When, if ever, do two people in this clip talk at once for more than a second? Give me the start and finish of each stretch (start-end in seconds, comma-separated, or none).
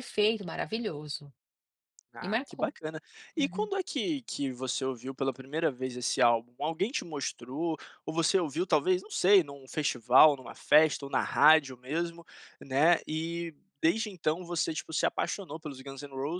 none